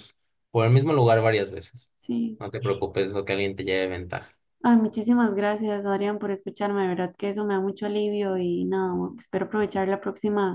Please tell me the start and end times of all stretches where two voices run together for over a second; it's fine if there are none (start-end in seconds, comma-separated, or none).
none